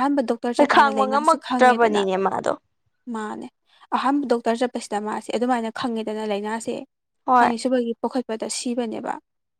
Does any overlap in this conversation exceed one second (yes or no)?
yes